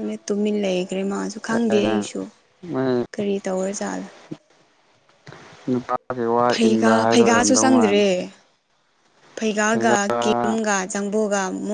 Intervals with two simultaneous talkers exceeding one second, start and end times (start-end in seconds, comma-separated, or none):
6.5-8.0